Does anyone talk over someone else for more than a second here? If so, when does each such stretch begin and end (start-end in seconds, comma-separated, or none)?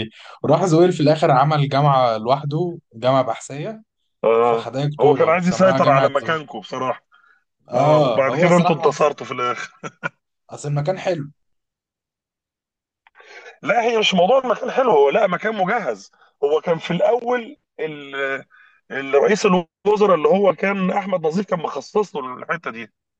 4.4-6.4, 7.7-9.1